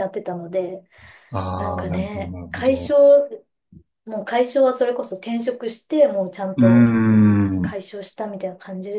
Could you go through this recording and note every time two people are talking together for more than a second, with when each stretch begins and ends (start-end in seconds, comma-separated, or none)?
1.6-3.0